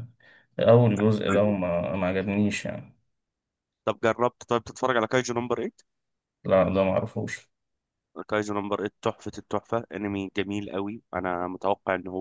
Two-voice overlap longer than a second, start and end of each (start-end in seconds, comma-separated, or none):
none